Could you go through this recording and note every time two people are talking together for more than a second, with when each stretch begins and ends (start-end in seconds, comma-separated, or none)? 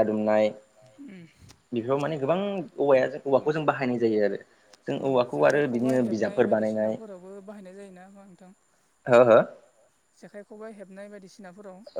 5.1-6.9